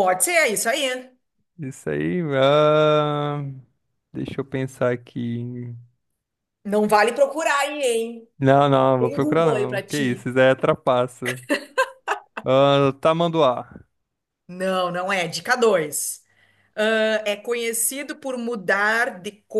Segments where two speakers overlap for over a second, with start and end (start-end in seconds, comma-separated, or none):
9.0-10.3